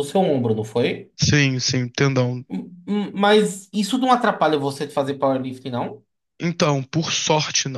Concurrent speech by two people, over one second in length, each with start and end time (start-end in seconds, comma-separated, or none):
none